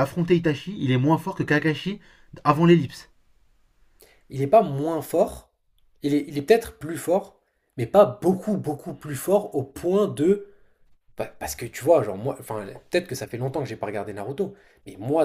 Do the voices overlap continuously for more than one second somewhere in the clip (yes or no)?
no